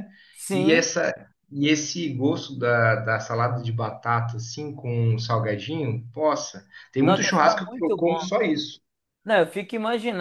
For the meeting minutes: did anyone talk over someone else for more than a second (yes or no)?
yes